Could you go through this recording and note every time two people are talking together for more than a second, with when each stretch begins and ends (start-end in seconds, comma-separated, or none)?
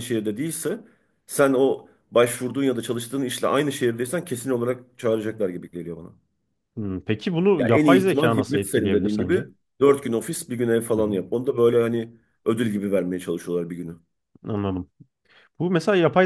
7.6-9.4